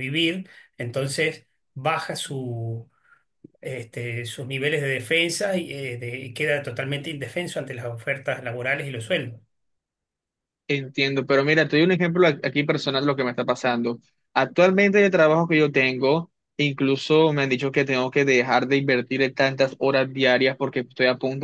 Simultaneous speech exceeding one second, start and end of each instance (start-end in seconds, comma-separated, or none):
none